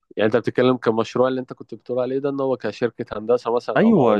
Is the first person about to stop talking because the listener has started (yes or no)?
yes